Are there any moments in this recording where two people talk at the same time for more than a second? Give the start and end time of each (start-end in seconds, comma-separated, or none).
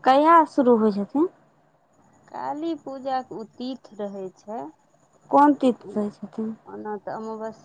none